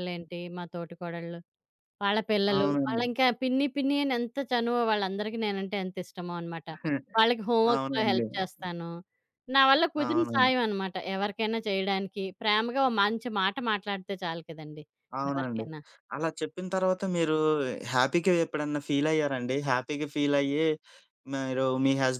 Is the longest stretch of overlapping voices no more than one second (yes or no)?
yes